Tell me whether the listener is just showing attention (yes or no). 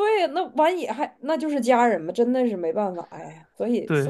no